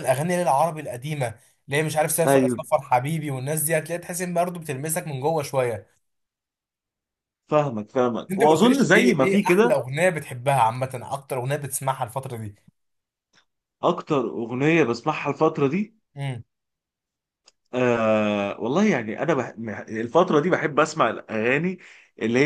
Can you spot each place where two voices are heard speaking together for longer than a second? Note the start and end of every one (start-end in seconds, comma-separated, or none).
8.3-9.8